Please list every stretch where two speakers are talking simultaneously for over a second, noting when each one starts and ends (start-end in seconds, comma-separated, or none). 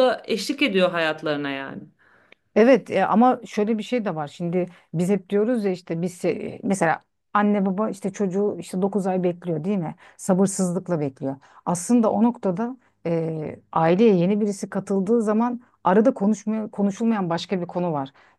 none